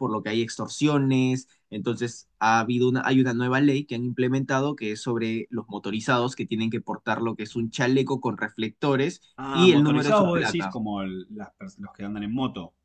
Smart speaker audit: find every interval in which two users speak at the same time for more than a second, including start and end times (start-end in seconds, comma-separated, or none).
9.4-10.7